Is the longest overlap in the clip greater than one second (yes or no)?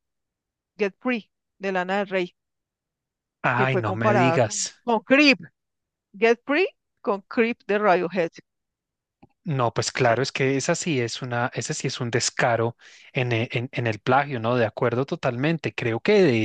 yes